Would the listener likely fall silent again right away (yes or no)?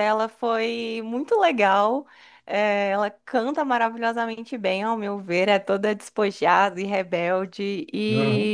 yes